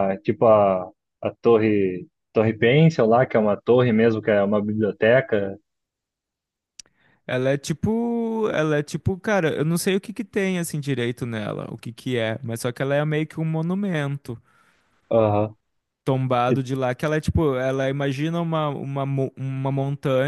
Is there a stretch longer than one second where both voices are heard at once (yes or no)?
no